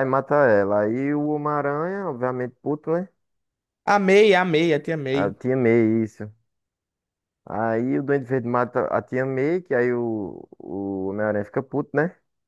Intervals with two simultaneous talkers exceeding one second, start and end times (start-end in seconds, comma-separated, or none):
none